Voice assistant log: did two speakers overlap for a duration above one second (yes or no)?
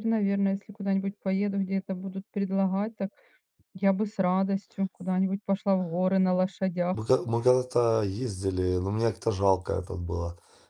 no